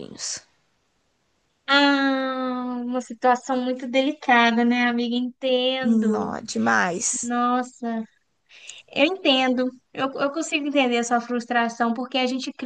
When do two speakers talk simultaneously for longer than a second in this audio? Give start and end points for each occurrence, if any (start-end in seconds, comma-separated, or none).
none